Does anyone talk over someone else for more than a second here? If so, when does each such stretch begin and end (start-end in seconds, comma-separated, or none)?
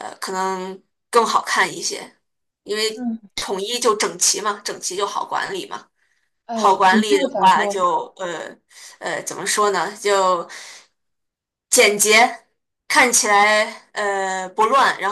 6.5-7.8